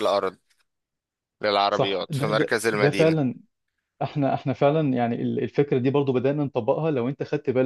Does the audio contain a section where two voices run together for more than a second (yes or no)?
yes